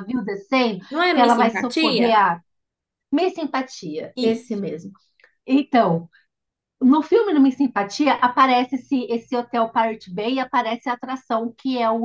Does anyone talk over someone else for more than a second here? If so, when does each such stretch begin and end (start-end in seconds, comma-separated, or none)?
0.9-2.3